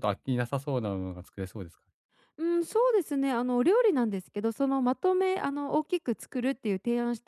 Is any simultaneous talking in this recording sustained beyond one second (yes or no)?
no